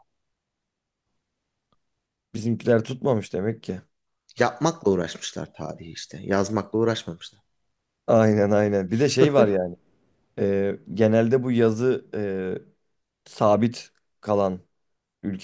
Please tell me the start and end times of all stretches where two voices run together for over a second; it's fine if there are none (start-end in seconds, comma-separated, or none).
none